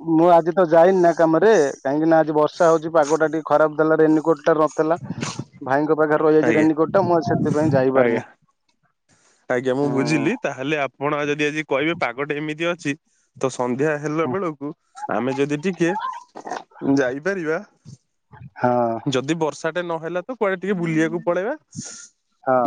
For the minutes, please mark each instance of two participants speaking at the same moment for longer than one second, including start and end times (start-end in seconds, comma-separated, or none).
none